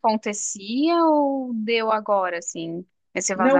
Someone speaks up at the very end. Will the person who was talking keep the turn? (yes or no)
no